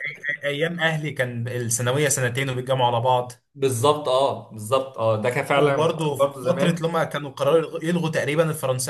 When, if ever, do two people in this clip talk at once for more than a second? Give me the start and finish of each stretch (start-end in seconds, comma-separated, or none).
5.5-6.8